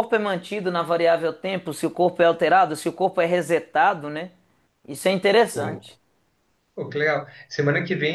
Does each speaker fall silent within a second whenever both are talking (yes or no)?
yes